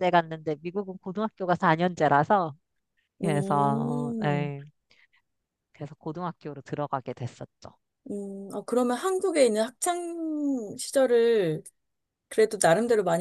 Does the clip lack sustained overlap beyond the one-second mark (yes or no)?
no